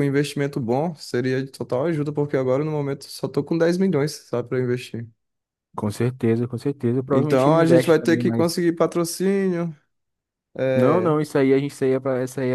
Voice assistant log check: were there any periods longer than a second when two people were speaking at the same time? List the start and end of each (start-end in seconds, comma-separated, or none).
7.1-8.5